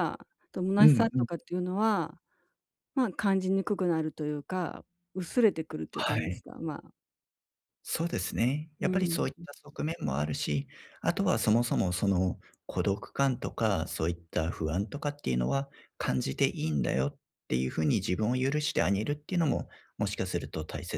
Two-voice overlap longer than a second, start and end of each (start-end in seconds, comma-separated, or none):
none